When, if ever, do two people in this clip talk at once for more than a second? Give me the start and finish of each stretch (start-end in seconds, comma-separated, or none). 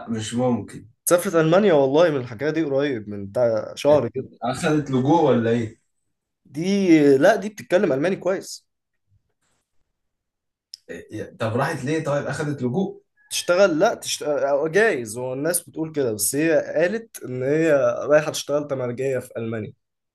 none